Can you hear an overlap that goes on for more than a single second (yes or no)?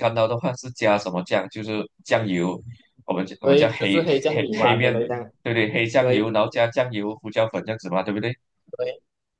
yes